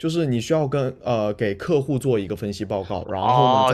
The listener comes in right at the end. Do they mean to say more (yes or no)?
yes